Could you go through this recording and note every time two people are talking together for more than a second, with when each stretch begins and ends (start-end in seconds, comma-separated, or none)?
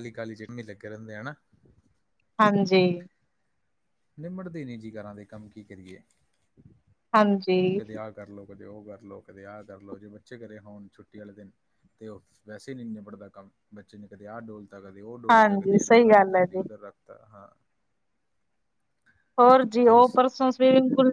15.3-16.6